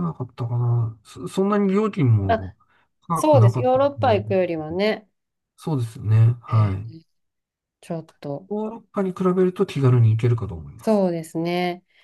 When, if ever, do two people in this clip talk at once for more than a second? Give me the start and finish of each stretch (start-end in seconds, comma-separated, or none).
3.1-4.8